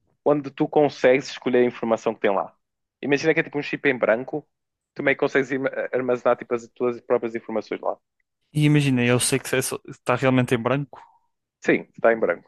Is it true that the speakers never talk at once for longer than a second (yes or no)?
yes